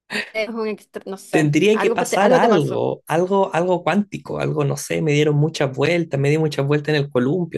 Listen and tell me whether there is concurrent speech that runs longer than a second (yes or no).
yes